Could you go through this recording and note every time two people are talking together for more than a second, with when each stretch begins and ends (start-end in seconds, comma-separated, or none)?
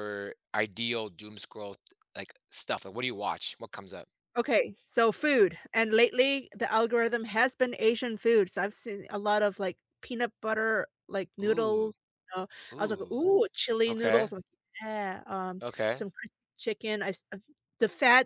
none